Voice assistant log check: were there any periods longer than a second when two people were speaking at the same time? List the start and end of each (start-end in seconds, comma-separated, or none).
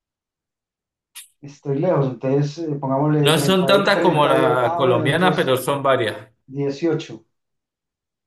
3.2-5.5